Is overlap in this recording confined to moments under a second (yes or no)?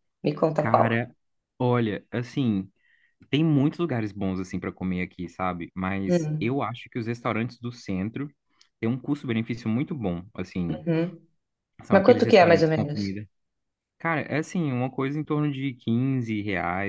no